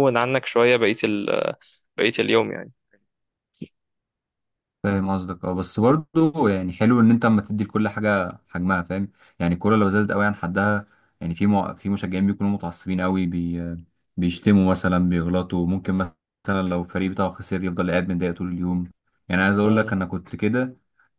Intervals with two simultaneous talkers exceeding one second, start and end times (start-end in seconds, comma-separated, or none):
none